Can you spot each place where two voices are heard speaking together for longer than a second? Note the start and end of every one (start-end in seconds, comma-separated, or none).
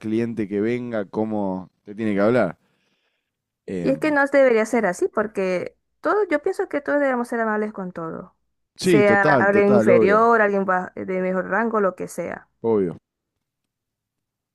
8.8-10.3